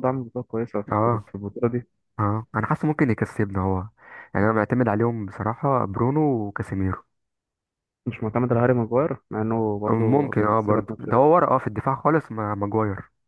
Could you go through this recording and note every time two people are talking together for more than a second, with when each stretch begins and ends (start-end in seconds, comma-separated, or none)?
9.9-11.3